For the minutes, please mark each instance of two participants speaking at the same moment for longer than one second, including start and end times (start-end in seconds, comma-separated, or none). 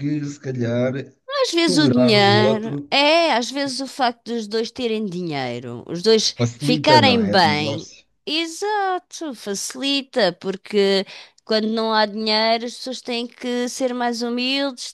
1.6-2.9, 6.4-8.0